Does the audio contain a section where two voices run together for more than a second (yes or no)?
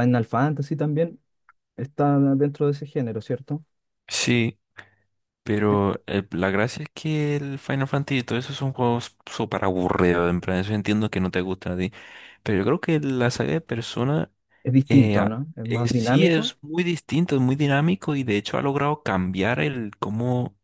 yes